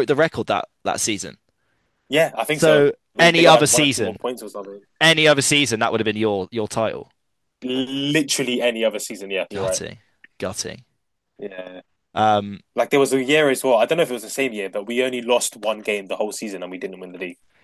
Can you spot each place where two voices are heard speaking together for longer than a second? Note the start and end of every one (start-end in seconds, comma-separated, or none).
2.5-4.2